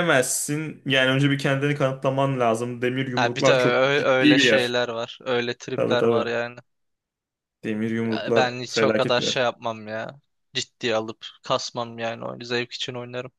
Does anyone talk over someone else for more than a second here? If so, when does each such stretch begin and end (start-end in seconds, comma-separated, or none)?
3.1-4.7, 8.1-9.4